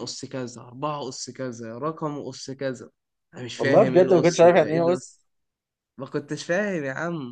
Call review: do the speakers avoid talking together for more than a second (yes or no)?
no